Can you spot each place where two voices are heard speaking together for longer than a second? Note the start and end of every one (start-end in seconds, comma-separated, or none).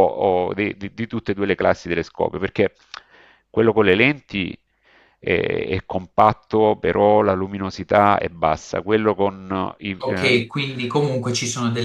none